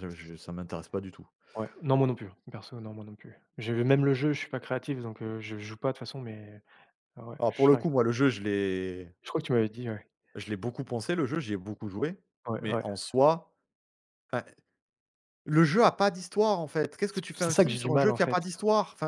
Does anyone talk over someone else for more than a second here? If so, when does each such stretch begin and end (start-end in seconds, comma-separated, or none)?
17.1-18.4